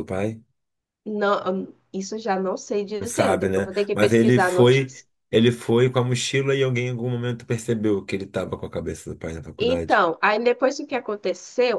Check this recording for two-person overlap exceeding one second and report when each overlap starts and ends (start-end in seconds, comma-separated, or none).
3.0-4.9